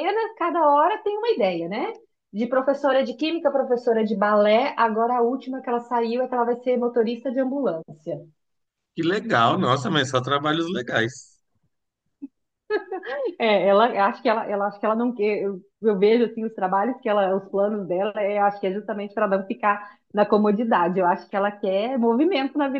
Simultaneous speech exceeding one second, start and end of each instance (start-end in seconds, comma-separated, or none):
none